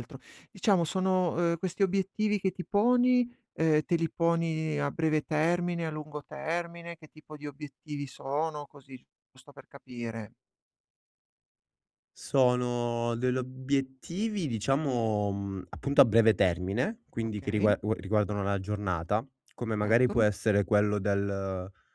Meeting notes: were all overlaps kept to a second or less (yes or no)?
yes